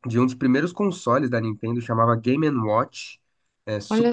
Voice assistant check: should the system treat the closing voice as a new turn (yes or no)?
no